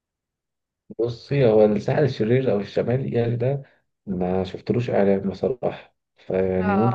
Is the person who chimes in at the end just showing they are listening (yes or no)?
yes